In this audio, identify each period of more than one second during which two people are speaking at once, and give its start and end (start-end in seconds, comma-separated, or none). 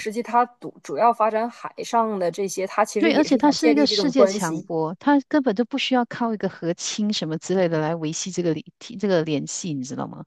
3.0-4.7